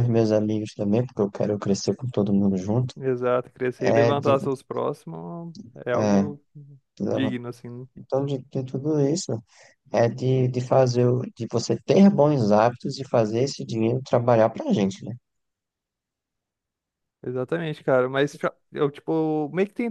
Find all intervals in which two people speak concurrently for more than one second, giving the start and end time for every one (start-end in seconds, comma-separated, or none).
none